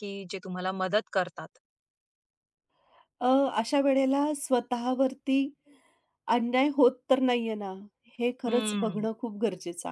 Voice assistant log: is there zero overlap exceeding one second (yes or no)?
yes